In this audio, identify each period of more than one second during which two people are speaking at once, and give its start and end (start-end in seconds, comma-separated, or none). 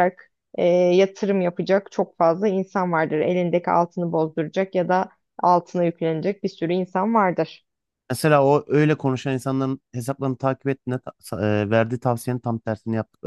none